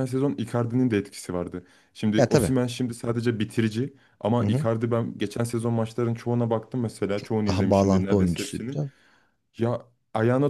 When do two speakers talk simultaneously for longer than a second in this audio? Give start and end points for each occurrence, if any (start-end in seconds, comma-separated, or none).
7.5-8.8